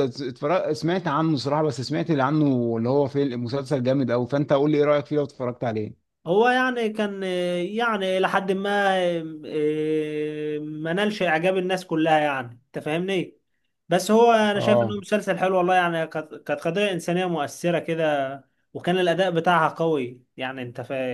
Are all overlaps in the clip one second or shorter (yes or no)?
yes